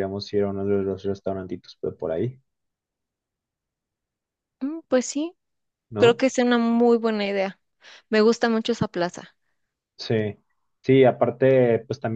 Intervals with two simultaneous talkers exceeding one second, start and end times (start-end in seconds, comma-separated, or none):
none